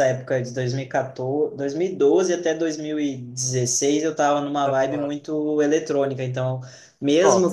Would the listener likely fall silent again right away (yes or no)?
yes